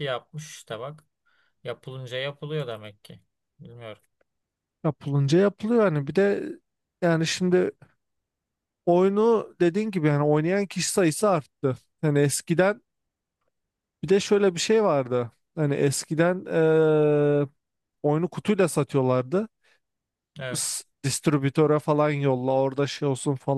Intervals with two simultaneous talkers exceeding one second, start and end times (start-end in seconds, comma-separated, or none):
none